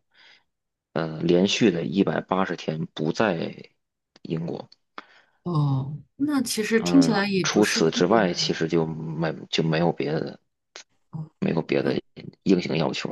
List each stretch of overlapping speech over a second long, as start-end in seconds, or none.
6.8-8.5